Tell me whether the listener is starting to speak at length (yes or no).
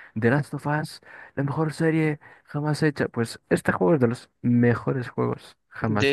yes